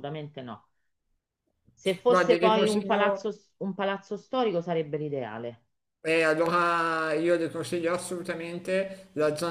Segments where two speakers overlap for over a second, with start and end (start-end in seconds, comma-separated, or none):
2.1-3.3